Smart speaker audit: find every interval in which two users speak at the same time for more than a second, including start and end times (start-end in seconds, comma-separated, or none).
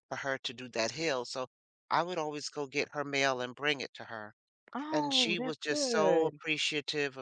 4.9-6.4